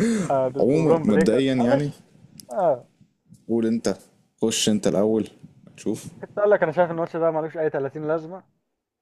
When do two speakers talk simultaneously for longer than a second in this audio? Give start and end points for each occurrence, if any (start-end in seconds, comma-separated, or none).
0.6-1.9